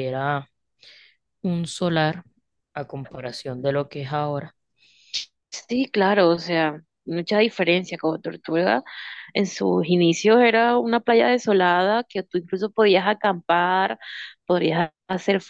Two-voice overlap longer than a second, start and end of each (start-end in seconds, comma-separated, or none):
none